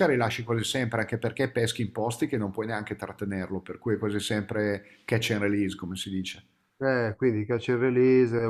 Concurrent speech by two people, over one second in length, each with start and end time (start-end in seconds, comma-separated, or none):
none